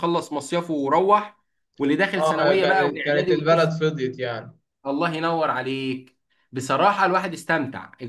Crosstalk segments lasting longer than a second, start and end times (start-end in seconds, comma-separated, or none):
2.2-3.8